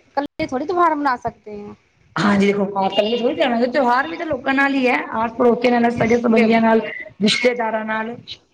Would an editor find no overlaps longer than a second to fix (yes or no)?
yes